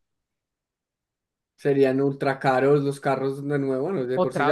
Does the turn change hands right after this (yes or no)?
yes